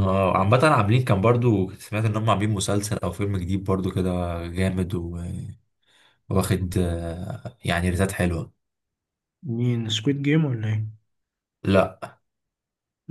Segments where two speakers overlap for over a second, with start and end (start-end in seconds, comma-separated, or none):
none